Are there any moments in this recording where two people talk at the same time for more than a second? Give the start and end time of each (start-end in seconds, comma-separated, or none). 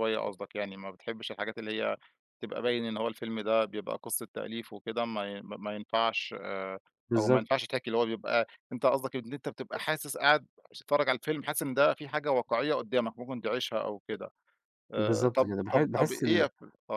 15.0-16.4